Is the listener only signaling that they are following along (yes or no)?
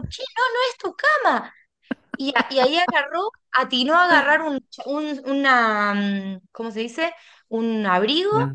yes